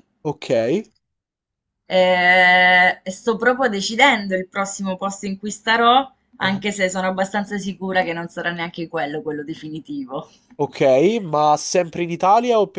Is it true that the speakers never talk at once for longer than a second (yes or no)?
yes